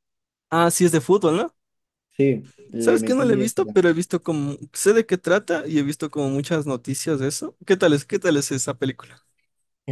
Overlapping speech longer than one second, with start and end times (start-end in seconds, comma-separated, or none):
2.8-4.0